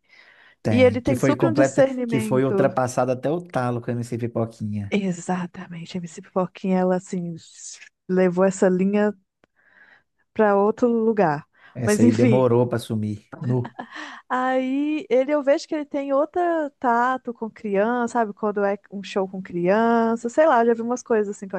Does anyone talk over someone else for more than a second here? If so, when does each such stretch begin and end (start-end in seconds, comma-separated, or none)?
0.7-2.5